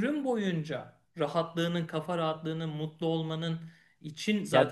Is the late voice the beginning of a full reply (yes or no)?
yes